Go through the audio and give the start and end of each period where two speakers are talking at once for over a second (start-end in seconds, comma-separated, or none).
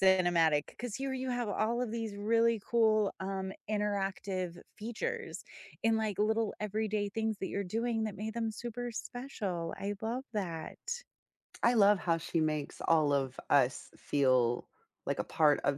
none